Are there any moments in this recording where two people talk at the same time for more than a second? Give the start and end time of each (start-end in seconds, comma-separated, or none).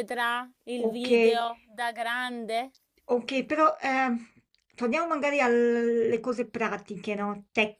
none